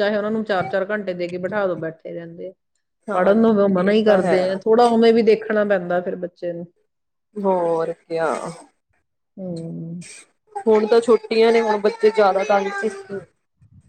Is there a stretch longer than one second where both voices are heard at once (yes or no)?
yes